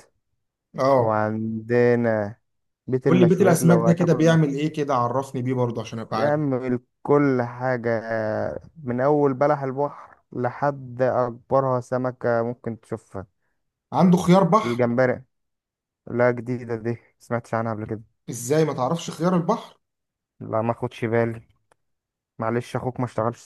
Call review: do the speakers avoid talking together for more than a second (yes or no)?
no